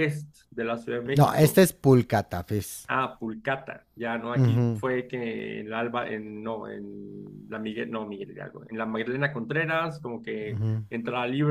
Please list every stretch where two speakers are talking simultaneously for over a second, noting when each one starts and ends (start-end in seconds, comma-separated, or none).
none